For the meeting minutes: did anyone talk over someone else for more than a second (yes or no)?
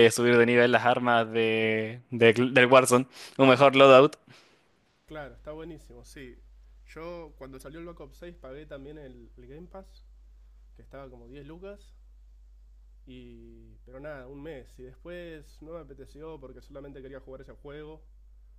no